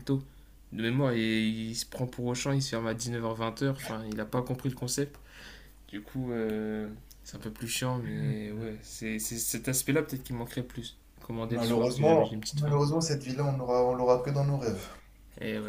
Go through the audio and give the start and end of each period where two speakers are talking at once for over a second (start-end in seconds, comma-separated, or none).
11.4-12.8